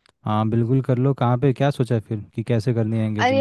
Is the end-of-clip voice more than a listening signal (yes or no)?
yes